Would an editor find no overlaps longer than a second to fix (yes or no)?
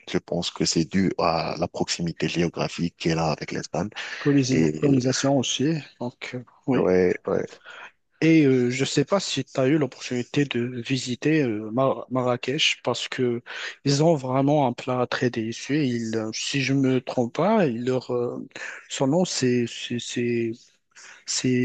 yes